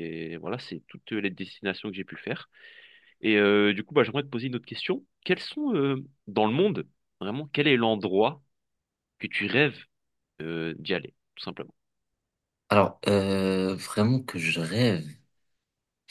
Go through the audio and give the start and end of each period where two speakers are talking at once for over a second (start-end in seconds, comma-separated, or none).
none